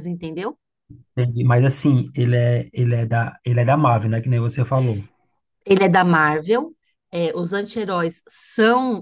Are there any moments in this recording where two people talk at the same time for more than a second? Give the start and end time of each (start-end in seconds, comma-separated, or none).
none